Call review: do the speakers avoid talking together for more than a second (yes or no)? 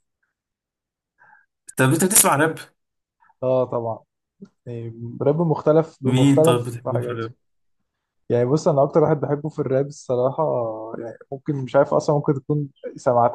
no